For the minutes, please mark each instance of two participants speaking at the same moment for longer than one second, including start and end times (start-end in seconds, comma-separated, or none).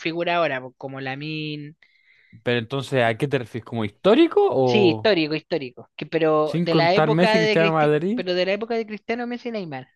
6.5-8.2